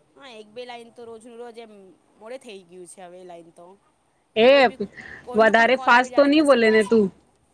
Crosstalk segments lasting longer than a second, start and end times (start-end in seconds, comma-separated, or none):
5.4-7.0